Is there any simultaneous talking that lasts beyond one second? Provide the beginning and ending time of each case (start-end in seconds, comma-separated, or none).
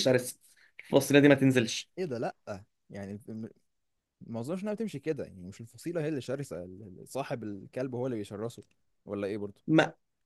none